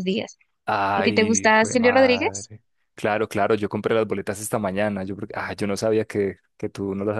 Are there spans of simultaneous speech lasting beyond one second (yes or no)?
yes